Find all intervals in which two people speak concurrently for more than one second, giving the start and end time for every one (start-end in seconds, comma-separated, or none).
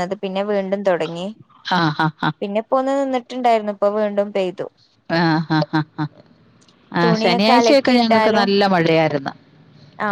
7.0-8.5